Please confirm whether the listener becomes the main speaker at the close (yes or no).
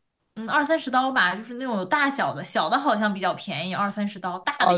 yes